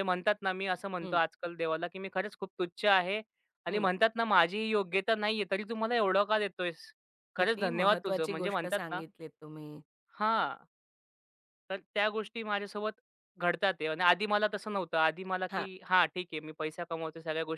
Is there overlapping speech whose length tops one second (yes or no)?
yes